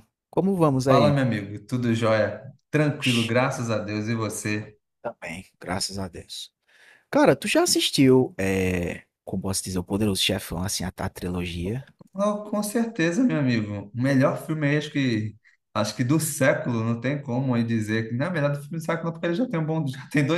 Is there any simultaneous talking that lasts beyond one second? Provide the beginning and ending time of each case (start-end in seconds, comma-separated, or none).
none